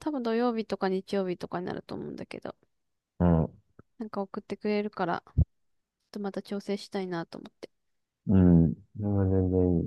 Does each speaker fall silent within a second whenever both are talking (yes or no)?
yes